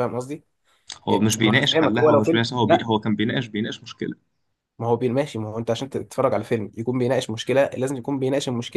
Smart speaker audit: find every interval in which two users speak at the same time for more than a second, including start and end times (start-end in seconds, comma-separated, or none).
1.1-2.9